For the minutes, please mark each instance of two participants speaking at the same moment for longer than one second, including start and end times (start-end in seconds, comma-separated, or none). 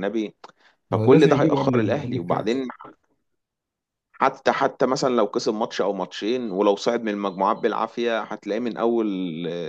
0.9-2.7